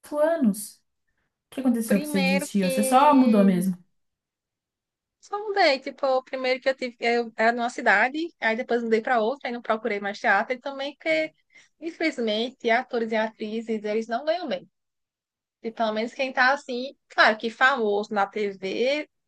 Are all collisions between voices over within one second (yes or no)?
no